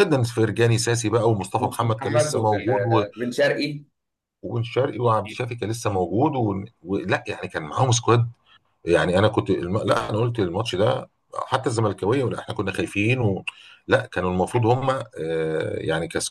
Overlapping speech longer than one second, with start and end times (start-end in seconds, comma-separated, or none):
1.6-3.0